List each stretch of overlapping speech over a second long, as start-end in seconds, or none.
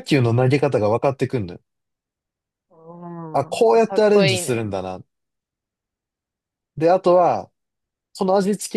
3.3-4.7